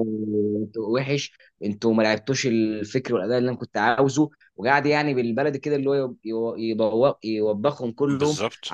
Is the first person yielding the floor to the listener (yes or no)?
no